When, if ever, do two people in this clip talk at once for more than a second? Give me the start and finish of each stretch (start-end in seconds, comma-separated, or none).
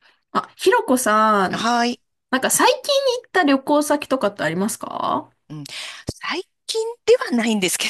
none